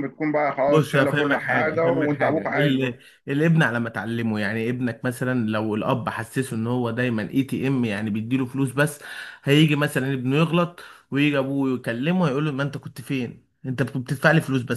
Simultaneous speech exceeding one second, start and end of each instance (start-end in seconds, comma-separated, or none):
0.7-3.0